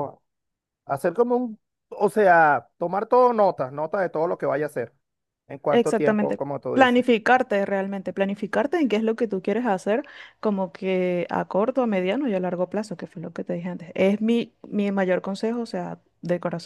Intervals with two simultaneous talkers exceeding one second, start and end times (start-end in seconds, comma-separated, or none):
5.7-7.0